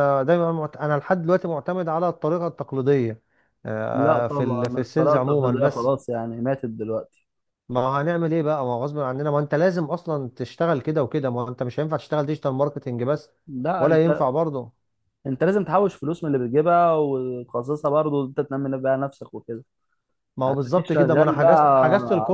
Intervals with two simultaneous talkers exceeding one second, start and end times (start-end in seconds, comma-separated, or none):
3.9-5.9, 20.5-21.8